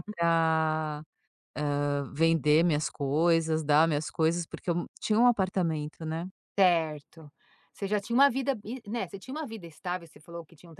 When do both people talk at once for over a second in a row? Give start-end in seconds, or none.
none